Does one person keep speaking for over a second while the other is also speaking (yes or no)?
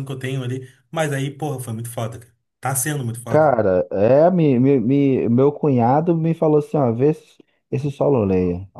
no